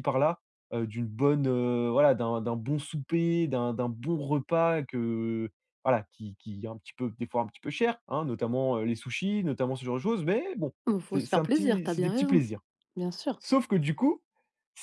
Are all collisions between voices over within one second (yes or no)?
no